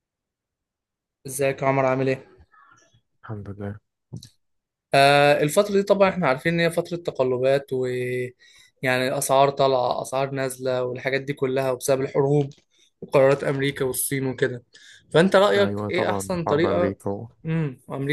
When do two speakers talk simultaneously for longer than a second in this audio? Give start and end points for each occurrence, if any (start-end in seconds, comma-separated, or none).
15.6-17.0